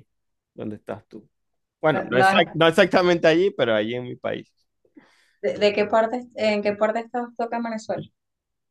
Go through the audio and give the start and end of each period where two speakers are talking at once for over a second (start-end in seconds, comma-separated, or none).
none